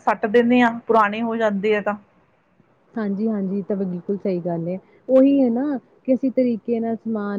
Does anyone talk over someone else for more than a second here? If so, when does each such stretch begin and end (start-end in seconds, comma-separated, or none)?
none